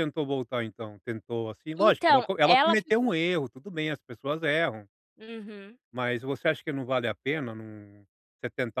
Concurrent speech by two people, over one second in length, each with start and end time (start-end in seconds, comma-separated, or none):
1.8-3.1